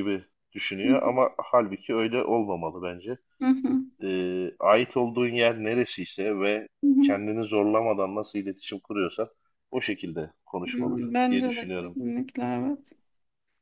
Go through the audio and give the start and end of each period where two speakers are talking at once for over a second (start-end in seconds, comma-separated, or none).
10.7-12.0